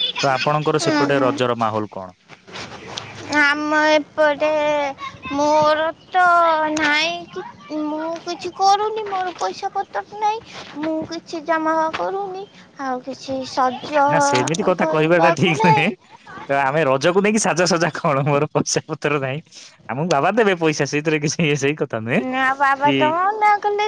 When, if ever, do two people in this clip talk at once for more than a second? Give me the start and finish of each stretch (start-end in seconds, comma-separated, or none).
none